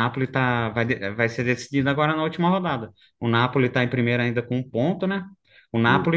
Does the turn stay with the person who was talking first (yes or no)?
yes